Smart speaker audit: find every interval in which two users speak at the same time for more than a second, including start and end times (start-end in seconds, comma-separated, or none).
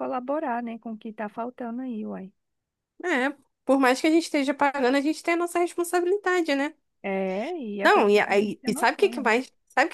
7.8-9.3